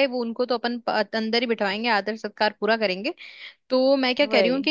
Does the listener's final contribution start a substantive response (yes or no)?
no